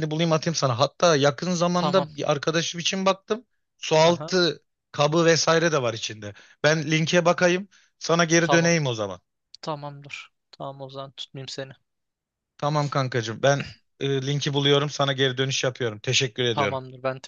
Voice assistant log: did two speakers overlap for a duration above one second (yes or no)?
no